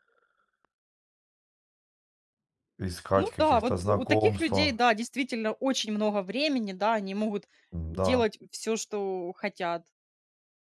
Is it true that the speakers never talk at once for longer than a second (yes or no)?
no